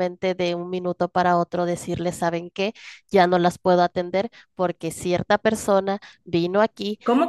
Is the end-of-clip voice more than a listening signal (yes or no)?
yes